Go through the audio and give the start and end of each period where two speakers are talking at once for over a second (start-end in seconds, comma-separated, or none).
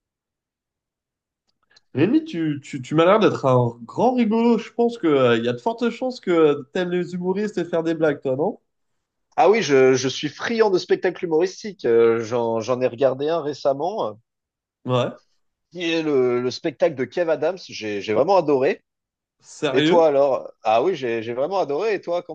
none